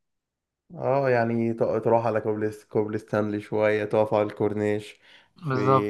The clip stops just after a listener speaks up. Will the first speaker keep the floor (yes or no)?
yes